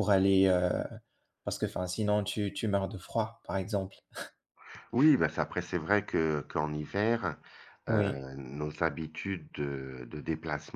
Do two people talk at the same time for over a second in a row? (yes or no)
no